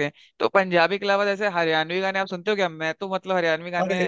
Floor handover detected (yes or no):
no